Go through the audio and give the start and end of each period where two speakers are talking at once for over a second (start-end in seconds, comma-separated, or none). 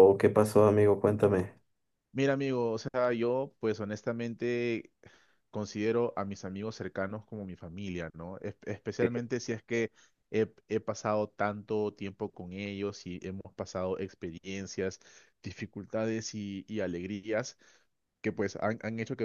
none